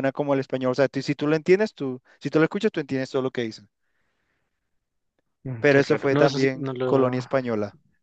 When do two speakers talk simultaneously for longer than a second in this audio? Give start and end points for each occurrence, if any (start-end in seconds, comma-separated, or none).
5.6-7.2